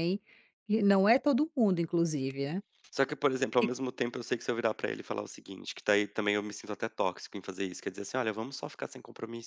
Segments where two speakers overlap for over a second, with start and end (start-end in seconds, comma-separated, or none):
none